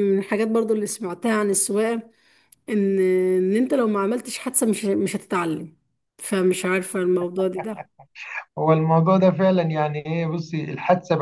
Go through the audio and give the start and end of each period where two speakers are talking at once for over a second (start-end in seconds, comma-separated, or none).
none